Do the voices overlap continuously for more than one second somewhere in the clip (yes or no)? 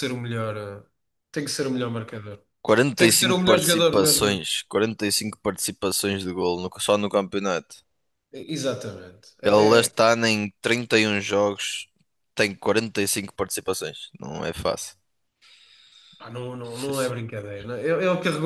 yes